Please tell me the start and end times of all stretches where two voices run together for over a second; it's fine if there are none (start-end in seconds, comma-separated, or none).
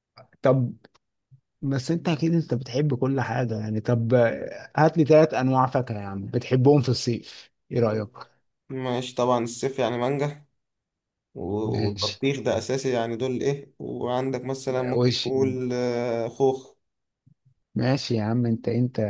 none